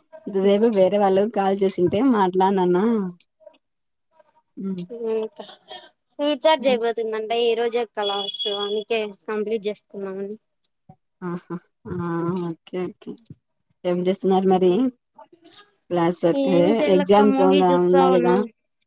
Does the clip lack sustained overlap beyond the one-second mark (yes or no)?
no